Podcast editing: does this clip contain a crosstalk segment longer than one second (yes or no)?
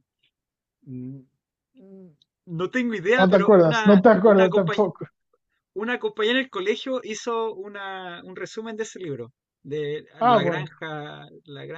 yes